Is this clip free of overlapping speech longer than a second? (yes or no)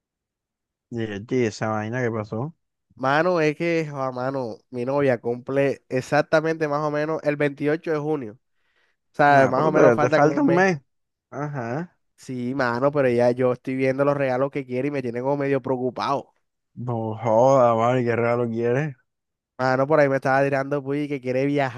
no